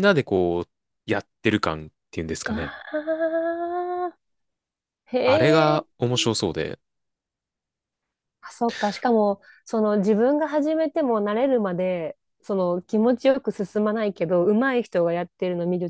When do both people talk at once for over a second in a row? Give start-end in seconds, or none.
none